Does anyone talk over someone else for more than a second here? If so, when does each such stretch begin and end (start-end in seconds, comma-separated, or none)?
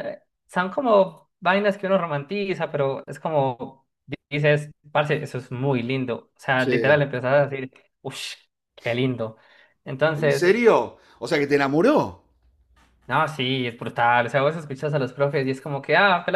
none